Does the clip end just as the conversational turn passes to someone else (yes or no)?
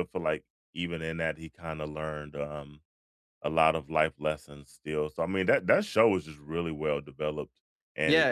yes